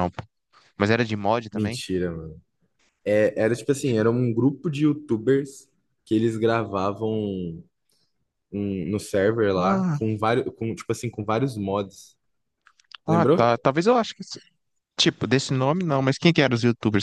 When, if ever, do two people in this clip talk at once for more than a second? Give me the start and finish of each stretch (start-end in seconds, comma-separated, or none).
none